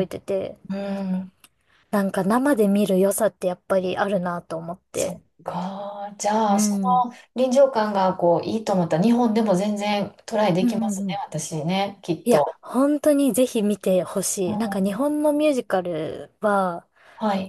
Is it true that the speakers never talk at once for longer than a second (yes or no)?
yes